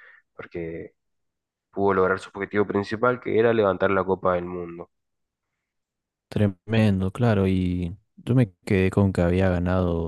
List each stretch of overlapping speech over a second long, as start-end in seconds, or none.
none